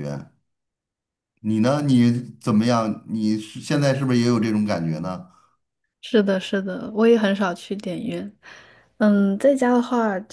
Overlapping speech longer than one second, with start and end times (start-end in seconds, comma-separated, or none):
none